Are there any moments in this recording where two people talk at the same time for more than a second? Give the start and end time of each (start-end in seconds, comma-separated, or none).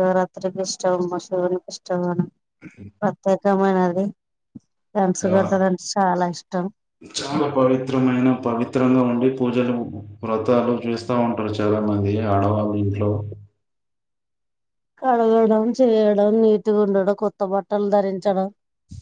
none